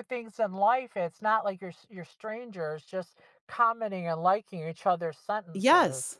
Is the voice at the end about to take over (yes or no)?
yes